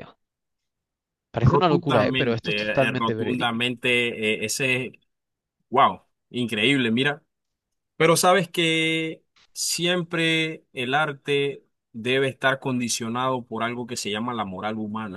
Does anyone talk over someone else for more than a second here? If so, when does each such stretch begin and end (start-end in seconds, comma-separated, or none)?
1.4-3.6